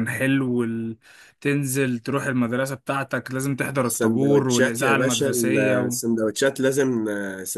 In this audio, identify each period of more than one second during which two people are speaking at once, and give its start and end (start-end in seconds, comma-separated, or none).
3.9-6.0